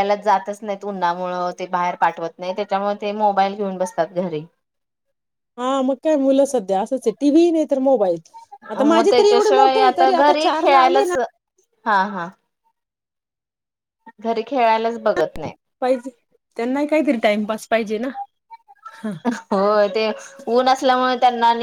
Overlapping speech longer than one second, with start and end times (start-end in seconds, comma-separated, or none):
8.9-11.2